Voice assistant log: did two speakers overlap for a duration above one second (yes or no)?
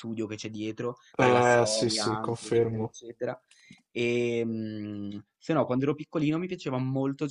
yes